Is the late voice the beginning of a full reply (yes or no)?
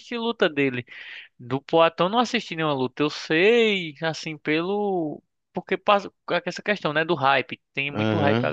yes